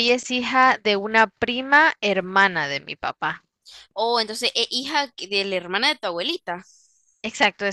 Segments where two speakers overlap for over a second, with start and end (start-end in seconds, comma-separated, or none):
none